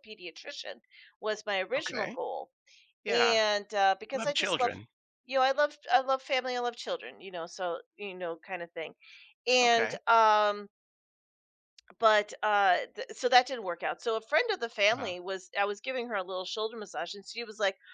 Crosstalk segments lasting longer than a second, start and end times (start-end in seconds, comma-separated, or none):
none